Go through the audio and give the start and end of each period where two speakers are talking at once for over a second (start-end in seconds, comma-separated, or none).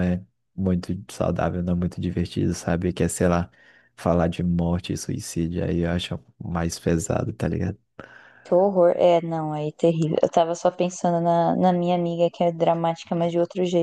none